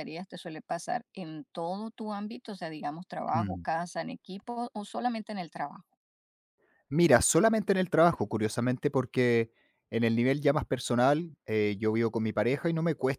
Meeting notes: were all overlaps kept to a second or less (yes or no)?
yes